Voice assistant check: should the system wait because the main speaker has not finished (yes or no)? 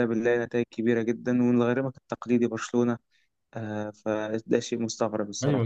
no